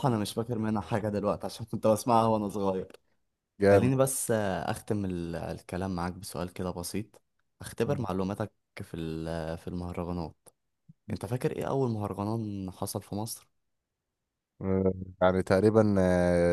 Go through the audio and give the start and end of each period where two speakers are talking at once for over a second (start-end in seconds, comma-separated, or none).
none